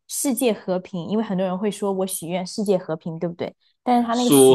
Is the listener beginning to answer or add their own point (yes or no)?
yes